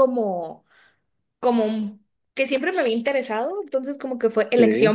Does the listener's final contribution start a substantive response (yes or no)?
no